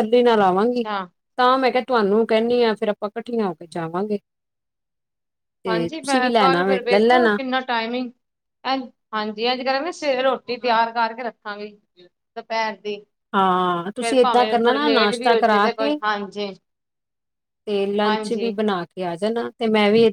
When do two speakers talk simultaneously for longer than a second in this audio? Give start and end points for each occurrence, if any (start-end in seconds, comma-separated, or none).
14.0-16.0